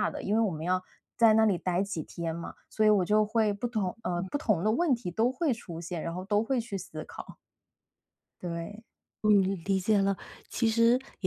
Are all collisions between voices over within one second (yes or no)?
yes